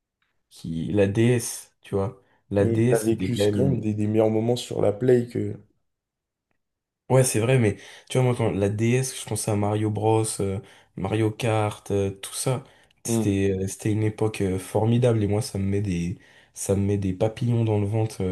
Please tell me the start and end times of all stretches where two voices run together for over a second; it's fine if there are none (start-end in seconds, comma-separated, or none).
2.6-3.9